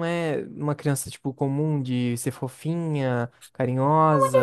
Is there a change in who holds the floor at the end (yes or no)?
yes